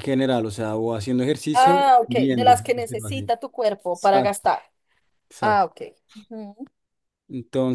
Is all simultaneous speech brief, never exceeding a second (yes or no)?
no